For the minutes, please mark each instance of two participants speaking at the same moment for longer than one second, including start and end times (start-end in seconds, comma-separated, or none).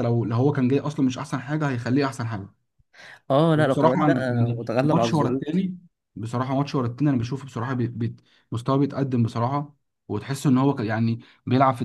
3.5-5.4